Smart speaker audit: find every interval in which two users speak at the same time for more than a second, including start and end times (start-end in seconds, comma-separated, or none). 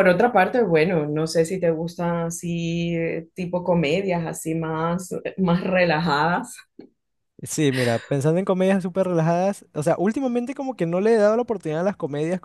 none